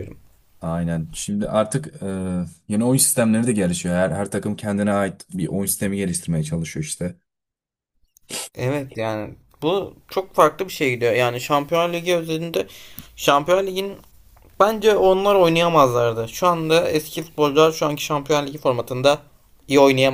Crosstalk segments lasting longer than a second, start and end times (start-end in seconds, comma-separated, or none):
none